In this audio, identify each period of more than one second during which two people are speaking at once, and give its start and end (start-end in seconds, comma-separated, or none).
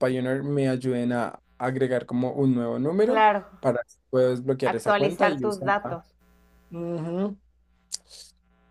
4.6-6.0